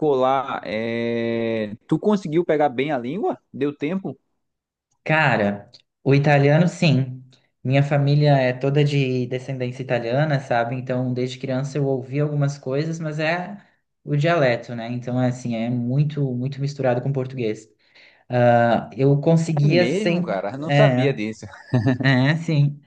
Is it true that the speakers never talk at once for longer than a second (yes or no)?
no